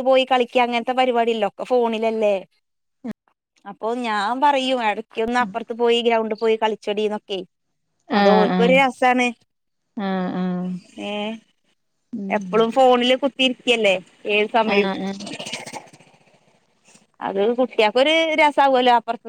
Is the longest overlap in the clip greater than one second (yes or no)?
no